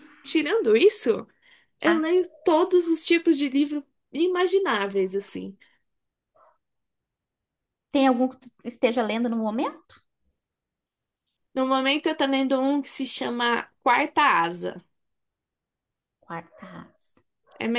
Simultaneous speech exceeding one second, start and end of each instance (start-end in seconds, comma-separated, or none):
none